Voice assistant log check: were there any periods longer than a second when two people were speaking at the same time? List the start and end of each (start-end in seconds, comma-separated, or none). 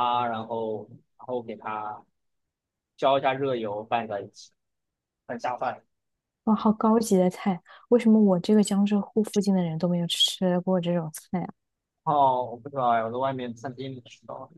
none